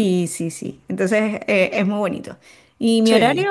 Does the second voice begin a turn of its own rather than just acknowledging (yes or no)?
no